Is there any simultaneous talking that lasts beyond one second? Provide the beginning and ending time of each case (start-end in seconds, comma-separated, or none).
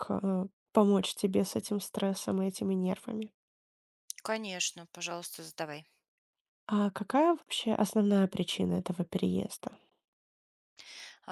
none